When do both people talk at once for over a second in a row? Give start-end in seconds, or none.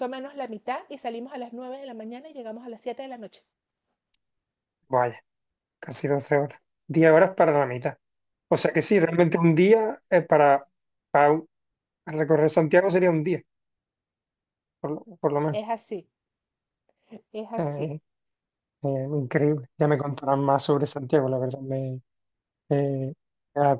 none